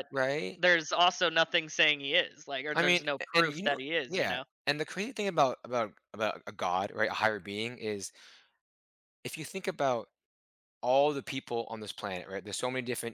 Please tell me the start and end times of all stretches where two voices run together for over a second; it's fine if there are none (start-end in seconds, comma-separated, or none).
2.7-4.4